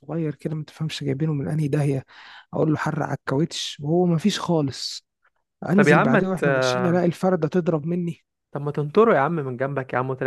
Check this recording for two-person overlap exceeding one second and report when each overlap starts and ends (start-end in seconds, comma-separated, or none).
5.7-7.0